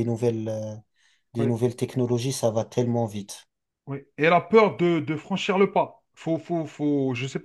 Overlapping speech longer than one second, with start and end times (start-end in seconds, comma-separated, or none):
none